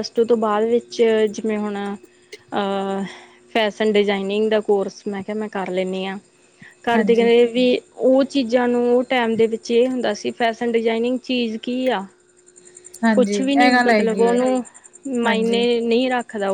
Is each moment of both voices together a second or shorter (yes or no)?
no